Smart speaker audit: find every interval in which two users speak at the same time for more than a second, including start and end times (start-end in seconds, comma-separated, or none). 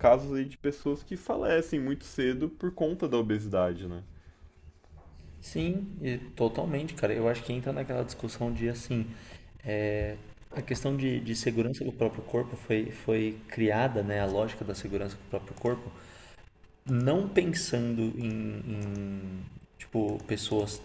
none